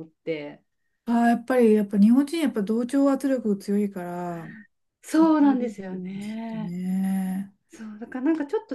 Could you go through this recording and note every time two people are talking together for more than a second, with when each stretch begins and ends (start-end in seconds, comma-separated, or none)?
5.0-6.8